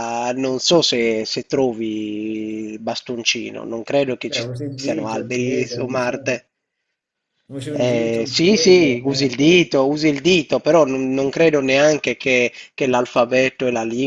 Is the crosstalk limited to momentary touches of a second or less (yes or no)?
no